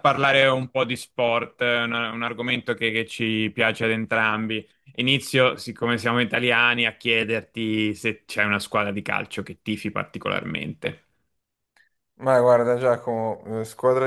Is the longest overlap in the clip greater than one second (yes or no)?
no